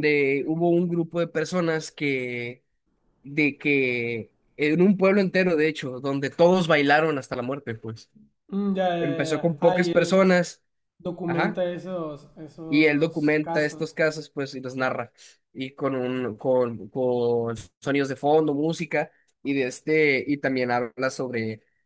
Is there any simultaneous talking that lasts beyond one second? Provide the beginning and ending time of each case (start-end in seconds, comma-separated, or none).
9.0-10.2, 12.7-14.0